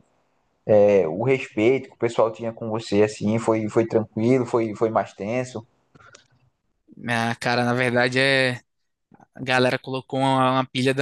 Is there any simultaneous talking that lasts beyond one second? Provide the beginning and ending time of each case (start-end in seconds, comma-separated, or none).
none